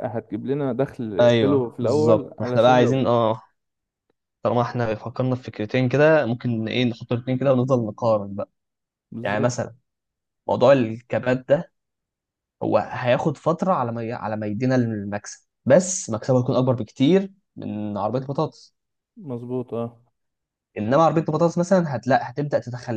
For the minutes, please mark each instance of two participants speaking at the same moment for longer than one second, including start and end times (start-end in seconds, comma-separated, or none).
1.2-3.1